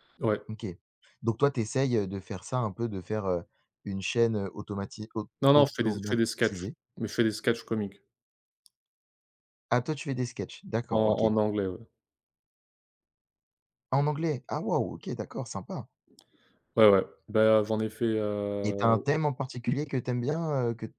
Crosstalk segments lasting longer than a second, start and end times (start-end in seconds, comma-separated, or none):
5.4-6.8